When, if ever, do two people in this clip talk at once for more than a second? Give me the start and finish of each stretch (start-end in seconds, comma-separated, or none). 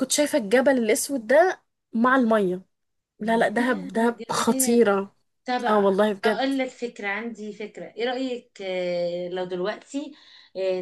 3.2-4.9